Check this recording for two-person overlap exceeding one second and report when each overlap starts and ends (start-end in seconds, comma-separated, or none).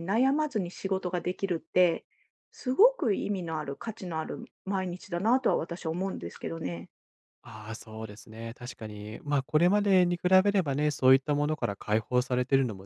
none